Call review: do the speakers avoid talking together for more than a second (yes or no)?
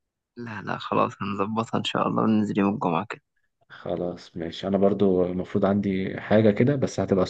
yes